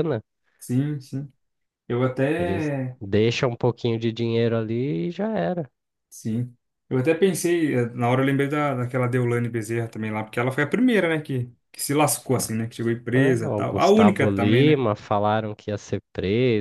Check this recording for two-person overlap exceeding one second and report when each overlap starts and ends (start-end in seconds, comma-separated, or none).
13.1-14.8